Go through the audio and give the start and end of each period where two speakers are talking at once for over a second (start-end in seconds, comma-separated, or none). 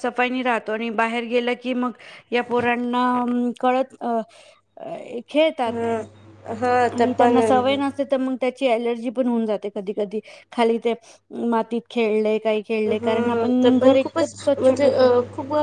12.9-14.9